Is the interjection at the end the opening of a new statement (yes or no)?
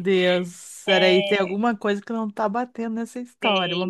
yes